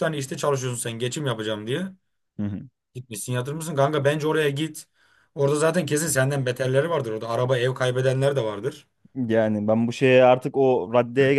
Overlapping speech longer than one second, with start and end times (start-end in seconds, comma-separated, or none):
none